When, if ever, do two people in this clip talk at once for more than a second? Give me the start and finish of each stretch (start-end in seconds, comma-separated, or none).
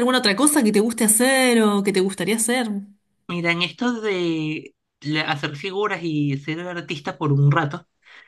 none